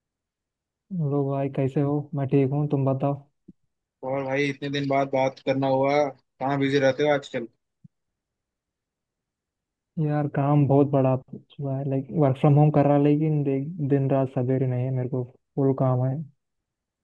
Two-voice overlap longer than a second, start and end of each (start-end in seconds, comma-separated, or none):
none